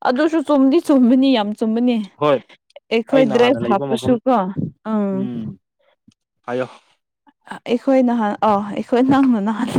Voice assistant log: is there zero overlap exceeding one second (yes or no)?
yes